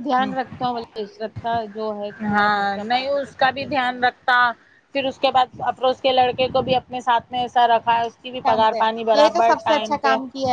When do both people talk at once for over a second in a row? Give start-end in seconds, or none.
2.3-4.0